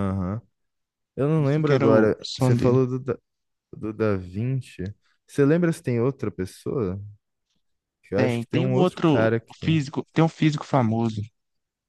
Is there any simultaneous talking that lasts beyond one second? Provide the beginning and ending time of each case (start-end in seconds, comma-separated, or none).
1.3-2.8, 8.1-9.8